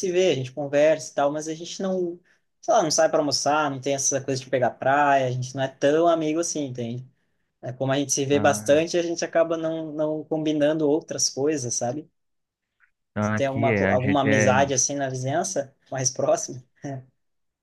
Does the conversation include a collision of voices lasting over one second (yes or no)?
yes